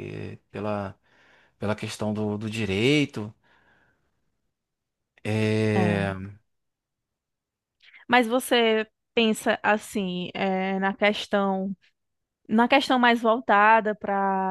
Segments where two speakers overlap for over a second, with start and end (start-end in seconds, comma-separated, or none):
none